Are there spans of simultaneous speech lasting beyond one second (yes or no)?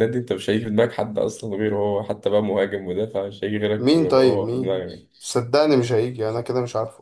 yes